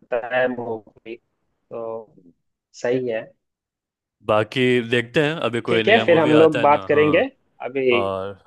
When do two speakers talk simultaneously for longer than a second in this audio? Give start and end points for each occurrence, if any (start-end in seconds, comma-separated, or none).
5.7-7.3